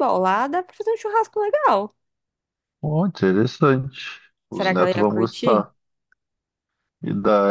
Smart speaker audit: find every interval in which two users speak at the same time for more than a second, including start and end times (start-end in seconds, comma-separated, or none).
4.5-5.7